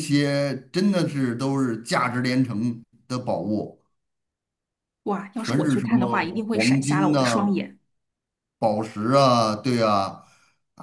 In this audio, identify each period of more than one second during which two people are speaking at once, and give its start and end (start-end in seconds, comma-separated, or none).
5.3-7.6